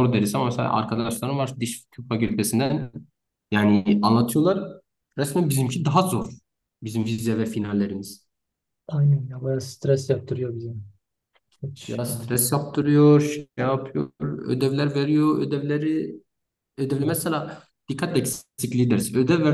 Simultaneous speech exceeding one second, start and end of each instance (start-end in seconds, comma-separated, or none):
none